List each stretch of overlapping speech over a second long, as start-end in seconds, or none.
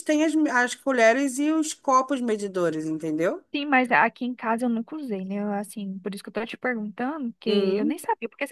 none